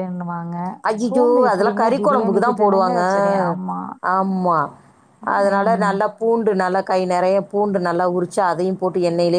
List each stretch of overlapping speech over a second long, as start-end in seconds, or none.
1.1-3.0